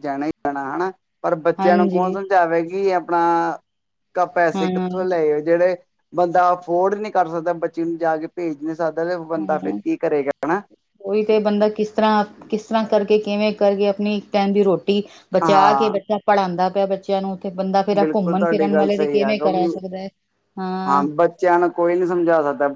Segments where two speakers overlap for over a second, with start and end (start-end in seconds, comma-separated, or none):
18.0-19.7